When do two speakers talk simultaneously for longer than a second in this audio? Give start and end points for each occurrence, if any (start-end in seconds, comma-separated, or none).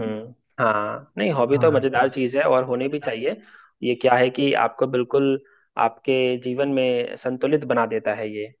1.5-3.1